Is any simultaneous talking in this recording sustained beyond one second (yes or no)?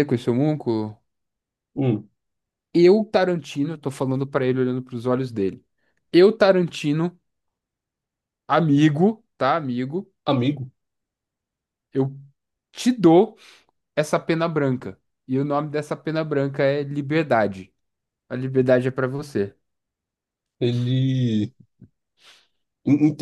no